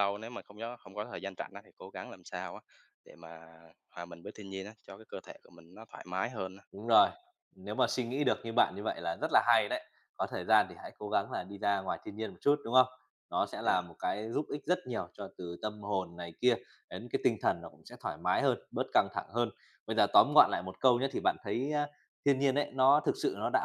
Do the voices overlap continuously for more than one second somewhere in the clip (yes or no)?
no